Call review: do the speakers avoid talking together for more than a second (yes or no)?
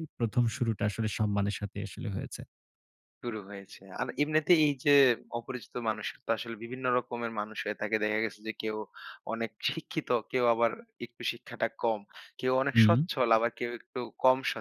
yes